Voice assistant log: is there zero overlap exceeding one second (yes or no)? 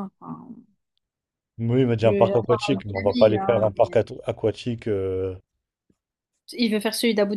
no